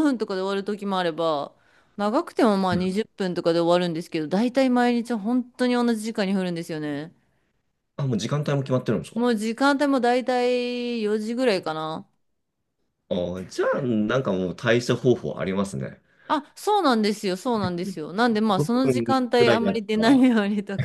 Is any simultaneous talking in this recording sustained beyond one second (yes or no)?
yes